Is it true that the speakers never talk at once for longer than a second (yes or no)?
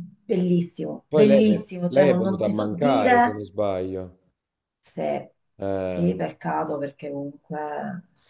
no